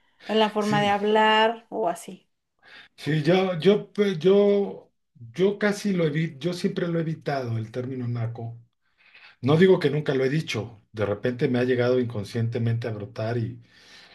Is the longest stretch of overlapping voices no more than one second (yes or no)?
yes